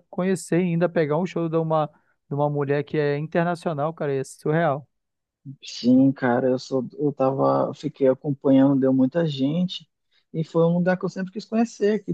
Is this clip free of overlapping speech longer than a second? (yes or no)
yes